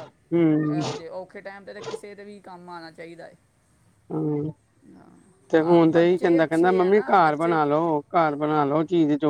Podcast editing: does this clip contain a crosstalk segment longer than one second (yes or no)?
yes